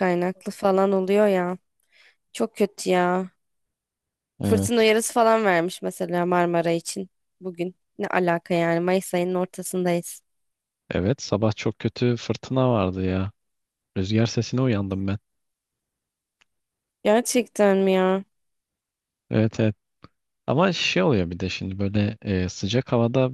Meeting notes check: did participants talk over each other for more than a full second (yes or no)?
no